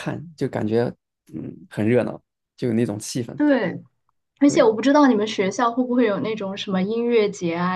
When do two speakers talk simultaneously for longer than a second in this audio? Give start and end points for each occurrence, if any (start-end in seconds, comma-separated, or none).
none